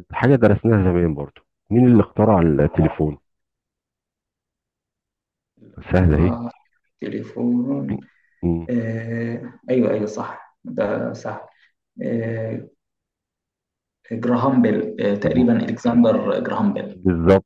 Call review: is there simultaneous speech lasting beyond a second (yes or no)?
no